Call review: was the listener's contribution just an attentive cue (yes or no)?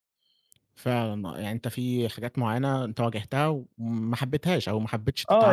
no